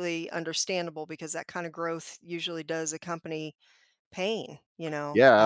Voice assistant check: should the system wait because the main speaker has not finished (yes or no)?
no